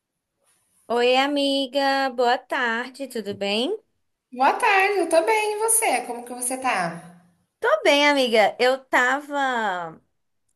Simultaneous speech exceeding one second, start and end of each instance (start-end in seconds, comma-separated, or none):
none